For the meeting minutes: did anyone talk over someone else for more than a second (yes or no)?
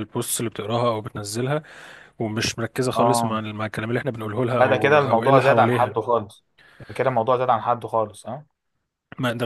yes